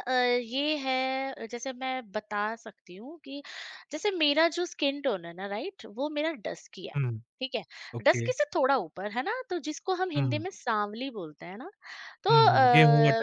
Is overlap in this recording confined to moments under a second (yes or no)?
yes